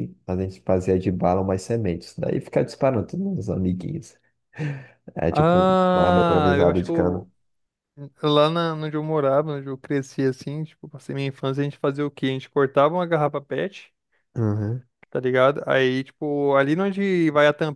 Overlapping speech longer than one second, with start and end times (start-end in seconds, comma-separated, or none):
5.3-7.3